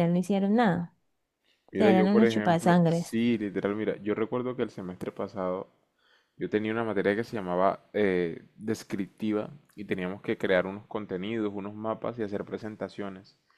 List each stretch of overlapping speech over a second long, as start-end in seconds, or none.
1.7-3.2